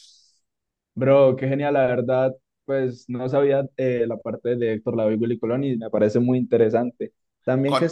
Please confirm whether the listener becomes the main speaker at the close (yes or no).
no